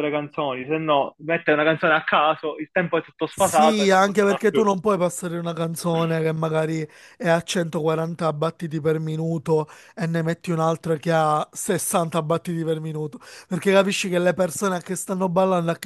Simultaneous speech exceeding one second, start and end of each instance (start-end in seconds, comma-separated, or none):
3.3-4.7